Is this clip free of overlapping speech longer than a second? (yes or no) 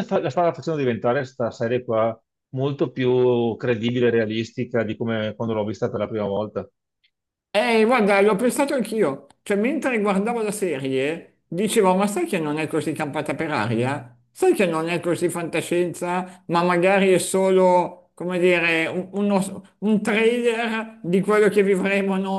yes